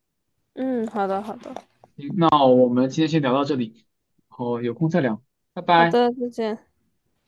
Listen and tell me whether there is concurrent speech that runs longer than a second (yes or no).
no